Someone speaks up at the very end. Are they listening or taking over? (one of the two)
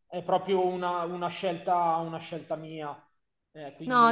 taking over